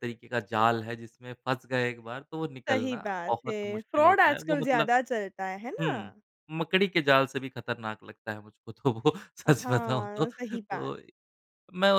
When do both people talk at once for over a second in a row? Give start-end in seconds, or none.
2.7-4.9, 9.5-10.9